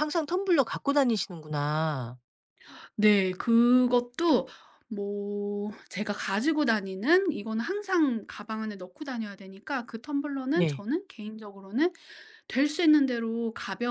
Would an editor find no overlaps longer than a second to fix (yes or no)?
yes